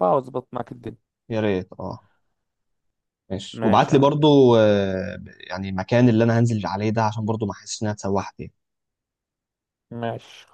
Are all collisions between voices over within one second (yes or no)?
yes